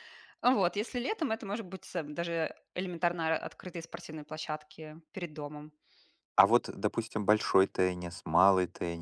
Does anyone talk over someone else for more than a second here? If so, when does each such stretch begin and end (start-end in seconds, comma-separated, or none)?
none